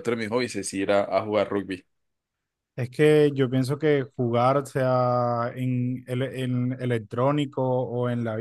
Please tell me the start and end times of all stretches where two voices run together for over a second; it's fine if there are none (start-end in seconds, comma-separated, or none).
none